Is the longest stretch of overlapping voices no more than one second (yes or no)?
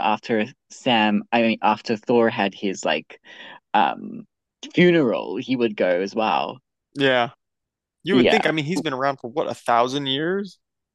yes